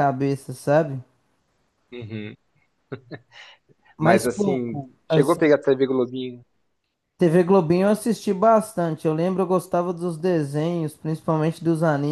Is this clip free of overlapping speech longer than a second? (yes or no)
no